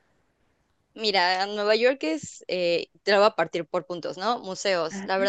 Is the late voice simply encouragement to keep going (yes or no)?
yes